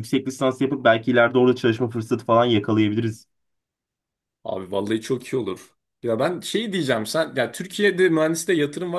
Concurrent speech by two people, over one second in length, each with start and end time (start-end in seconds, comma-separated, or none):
none